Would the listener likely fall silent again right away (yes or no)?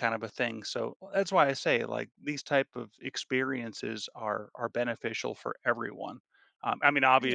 yes